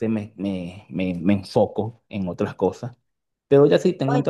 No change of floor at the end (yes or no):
yes